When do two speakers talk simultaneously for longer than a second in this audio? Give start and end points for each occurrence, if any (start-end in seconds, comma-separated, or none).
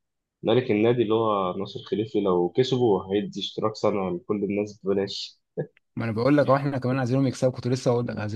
none